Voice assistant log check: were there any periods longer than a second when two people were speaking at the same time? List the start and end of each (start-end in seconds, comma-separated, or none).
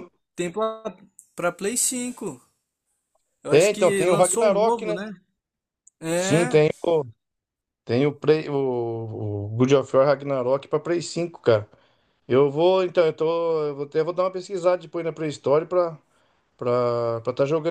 3.5-5.0